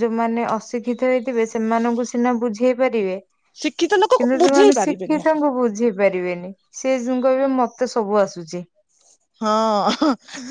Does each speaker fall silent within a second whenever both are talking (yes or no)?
no